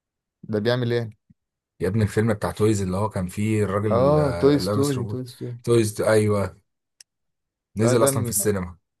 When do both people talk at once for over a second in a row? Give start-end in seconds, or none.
3.9-5.2